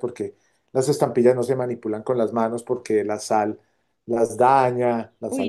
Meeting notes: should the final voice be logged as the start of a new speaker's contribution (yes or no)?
yes